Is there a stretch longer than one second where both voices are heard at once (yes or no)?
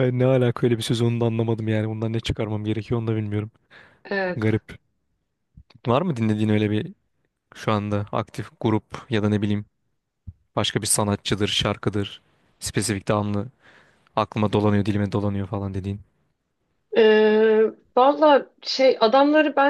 no